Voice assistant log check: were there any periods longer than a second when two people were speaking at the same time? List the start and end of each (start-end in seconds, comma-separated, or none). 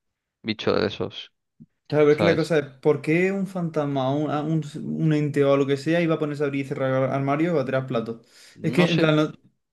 none